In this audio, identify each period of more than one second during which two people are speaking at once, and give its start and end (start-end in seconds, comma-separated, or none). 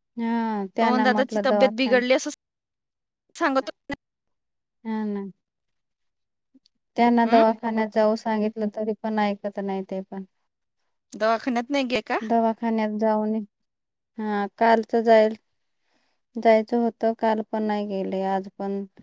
0.8-2.0